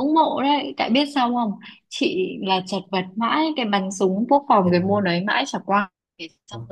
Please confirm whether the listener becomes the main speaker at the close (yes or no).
no